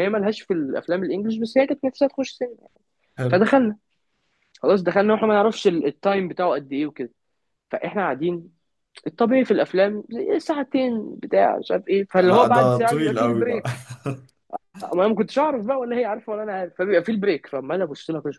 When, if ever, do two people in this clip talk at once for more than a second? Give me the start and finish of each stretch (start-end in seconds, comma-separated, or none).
12.2-13.6